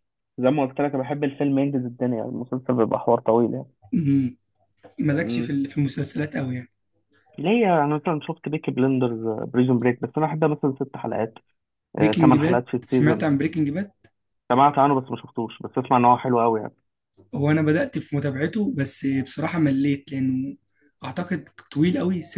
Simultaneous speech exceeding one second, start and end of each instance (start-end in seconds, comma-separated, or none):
12.0-13.2